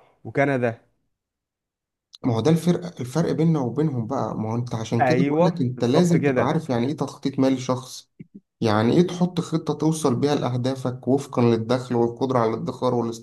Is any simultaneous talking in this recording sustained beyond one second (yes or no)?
yes